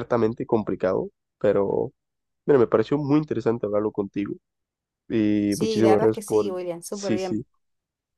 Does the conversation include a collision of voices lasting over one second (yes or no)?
yes